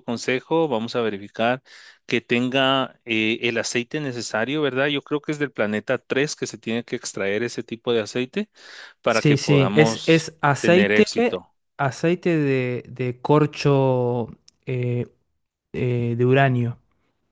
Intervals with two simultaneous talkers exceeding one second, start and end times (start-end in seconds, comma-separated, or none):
9.1-11.5